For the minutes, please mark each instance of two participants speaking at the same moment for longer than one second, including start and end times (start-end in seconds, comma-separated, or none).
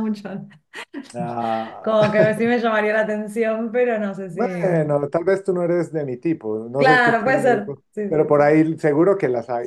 6.8-8.5